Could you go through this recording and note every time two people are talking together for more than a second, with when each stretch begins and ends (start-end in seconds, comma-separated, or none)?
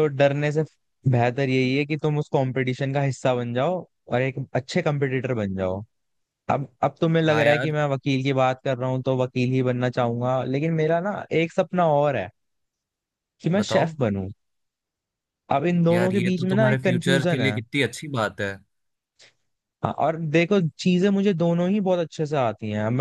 15.9-17.6